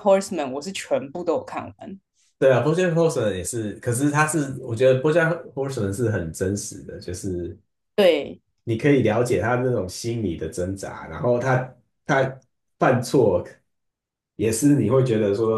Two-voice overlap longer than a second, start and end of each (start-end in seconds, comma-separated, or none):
none